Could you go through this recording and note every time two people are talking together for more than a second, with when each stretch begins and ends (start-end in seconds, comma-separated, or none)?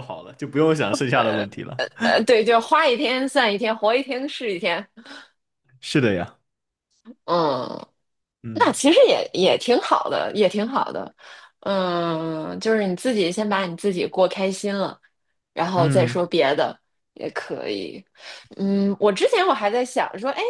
none